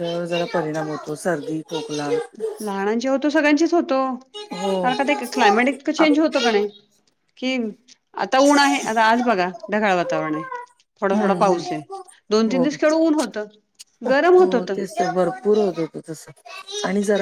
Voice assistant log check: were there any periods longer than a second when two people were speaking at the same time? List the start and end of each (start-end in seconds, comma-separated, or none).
none